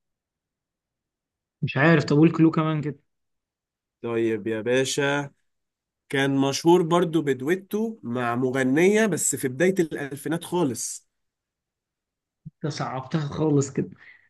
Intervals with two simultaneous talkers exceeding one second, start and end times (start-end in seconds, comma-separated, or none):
none